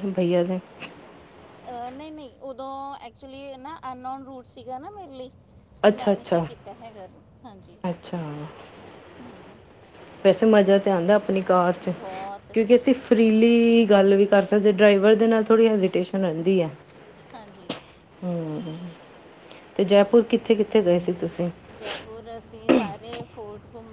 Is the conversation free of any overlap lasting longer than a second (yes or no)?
yes